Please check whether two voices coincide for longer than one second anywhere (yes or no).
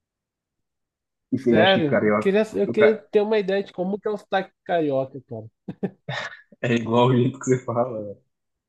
yes